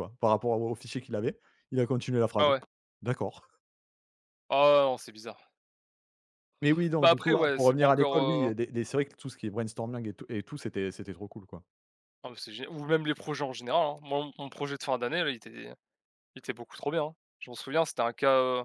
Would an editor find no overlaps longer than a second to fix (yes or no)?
no